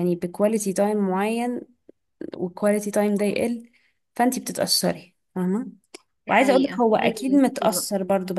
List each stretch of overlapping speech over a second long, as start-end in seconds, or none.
6.3-7.9